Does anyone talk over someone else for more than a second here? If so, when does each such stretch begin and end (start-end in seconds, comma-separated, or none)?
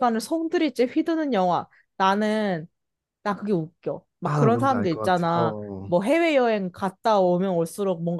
4.2-5.9